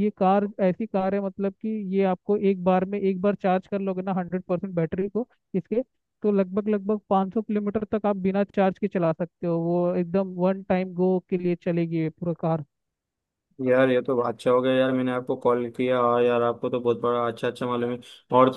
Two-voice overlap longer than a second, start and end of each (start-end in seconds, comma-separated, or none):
none